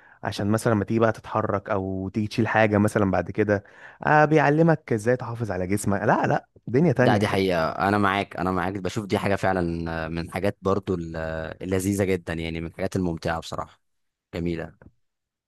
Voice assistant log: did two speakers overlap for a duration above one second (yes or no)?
no